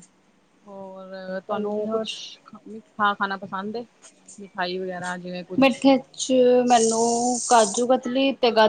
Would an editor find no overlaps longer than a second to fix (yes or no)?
yes